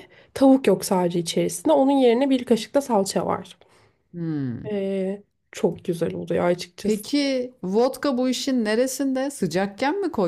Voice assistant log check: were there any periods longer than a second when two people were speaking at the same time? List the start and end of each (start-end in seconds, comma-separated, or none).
none